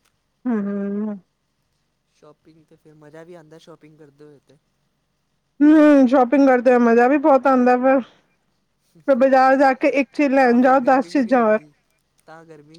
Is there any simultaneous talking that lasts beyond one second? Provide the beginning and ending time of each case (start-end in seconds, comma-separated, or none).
10.4-11.6